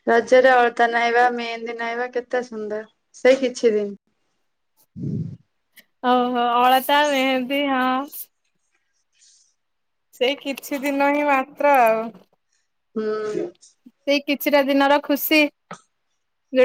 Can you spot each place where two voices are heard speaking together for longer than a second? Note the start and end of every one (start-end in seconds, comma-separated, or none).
none